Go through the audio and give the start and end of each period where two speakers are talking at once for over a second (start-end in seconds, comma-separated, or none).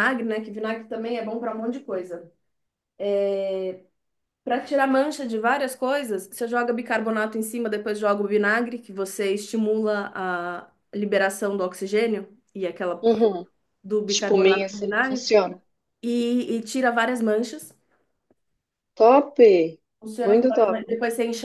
14.1-15.4